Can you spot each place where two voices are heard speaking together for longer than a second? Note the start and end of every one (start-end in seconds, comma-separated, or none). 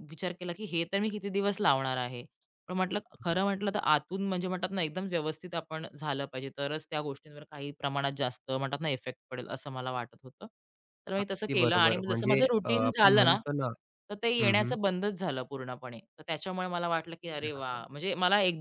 11.2-13.4